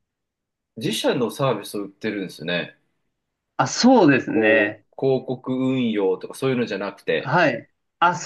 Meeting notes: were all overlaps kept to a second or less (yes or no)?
yes